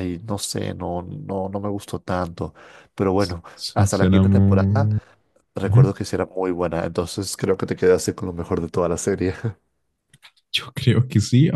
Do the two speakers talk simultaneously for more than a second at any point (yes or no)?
yes